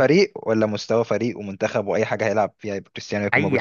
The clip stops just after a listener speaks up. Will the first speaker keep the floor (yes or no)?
no